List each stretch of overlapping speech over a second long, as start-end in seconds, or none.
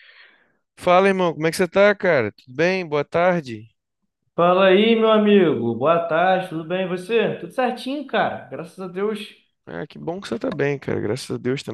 none